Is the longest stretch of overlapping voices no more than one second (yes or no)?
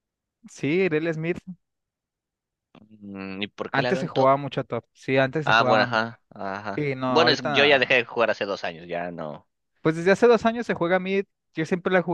no